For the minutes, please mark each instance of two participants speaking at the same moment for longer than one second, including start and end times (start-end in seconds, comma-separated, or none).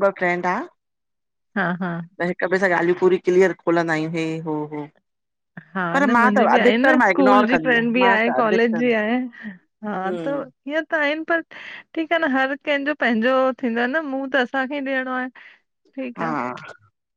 5.9-8.9